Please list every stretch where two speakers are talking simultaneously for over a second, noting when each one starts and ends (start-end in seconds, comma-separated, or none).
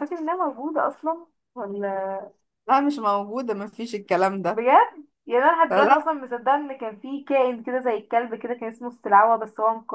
none